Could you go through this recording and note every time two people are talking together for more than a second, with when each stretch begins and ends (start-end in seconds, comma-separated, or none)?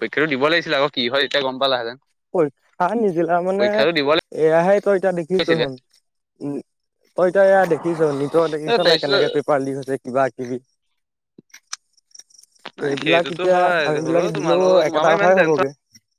13.0-15.7